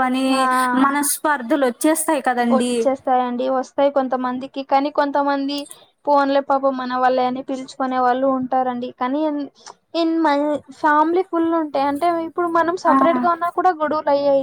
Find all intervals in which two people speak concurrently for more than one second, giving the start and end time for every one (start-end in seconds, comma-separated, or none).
none